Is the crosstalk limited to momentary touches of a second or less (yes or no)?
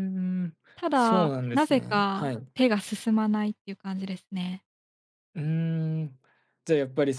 no